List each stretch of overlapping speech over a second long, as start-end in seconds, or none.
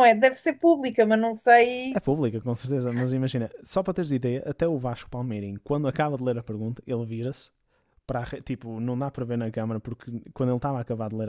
none